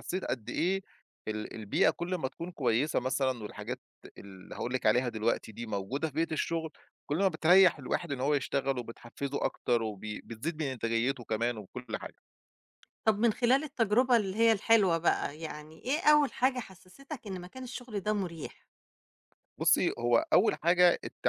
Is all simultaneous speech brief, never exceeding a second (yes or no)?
yes